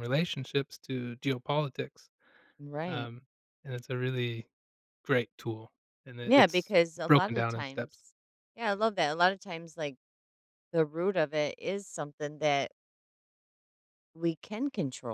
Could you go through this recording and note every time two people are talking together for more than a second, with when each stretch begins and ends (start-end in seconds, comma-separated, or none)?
6.2-8.0